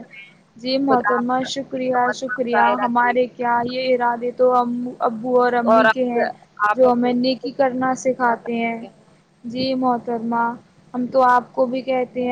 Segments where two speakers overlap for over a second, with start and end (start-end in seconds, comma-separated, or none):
0.9-3.1, 6.8-8.8